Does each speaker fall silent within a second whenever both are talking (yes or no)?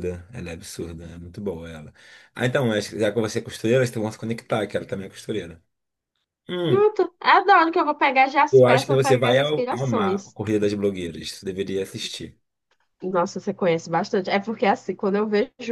no